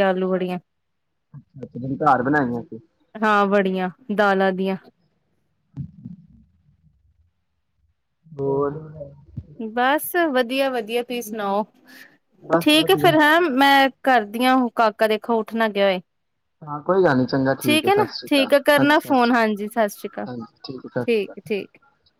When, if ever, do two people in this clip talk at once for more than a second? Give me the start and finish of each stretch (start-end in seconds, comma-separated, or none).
17.9-20.3